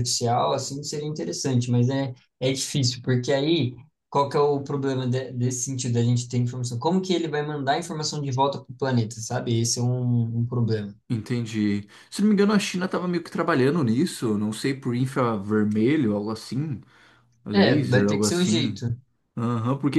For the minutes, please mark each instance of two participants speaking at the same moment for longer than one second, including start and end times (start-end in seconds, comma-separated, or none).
17.5-18.8